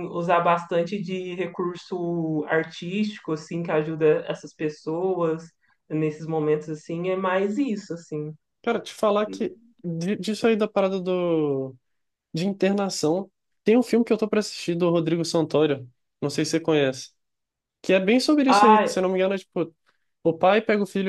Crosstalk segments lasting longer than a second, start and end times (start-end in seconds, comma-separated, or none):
none